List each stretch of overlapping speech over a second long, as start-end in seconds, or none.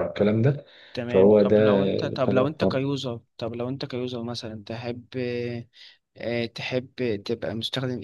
1.1-2.9